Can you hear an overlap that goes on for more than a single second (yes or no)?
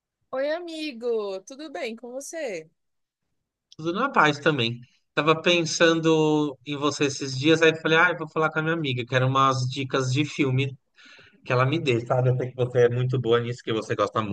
no